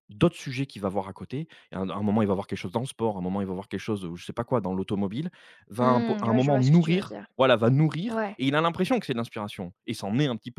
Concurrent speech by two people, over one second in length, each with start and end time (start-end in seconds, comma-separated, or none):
5.8-7.3